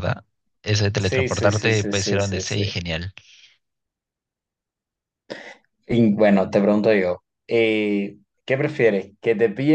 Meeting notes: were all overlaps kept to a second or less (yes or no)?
no